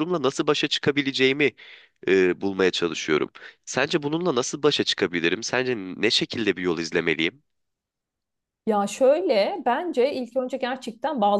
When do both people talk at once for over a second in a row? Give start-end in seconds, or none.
none